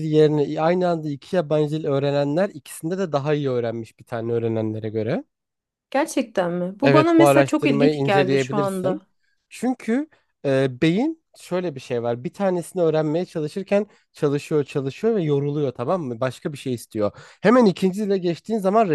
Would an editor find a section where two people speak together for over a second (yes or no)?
yes